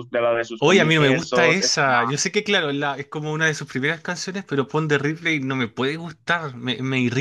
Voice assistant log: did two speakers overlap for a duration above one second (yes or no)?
yes